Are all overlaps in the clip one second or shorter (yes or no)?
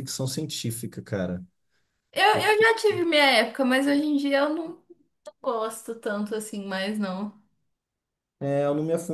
yes